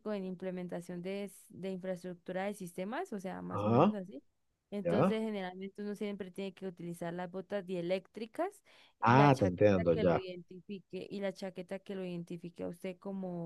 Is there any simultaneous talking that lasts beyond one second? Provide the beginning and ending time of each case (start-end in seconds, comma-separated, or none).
9.0-10.2